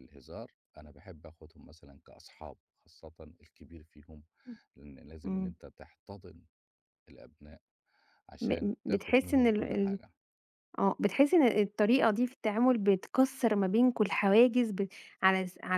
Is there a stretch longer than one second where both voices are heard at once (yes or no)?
yes